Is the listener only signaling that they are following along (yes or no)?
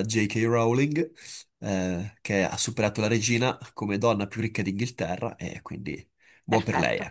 no